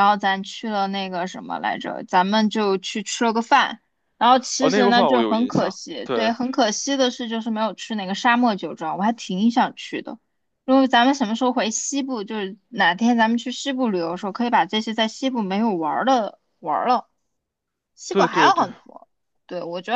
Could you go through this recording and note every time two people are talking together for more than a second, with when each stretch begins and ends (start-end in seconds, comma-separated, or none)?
4.6-6.3